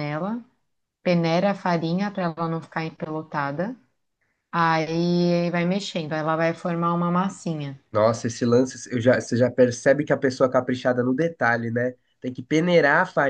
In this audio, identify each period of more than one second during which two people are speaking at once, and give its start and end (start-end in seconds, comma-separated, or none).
none